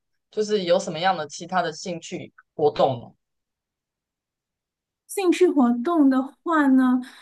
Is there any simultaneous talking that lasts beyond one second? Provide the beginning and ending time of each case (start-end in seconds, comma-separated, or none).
none